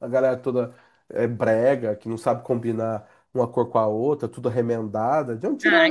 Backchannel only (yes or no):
no